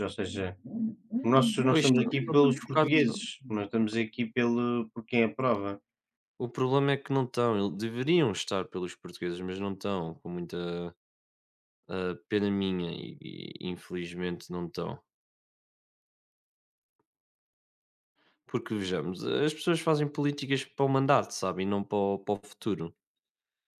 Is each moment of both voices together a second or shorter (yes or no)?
no